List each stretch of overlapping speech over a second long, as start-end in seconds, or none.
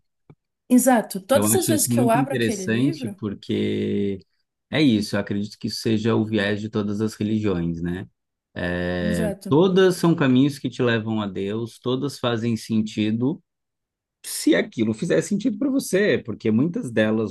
1.3-3.1